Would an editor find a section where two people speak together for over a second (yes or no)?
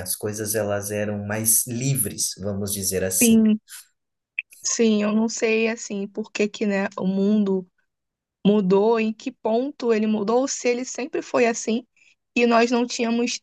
no